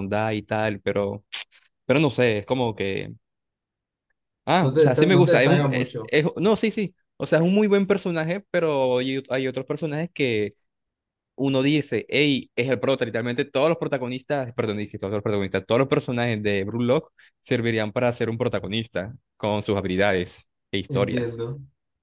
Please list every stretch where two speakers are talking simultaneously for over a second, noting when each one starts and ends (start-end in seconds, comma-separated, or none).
4.6-6.1